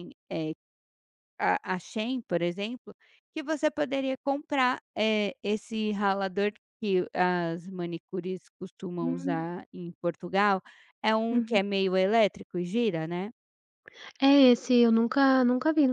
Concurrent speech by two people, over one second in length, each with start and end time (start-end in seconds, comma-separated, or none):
none